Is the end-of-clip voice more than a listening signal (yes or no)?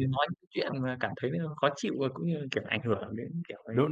yes